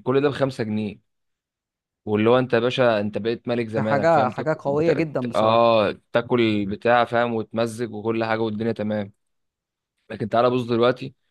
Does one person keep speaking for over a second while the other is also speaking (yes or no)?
yes